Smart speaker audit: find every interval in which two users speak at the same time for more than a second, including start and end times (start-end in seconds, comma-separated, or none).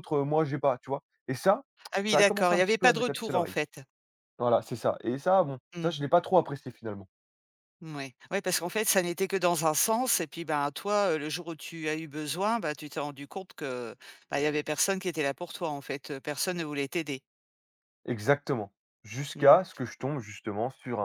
2.0-3.5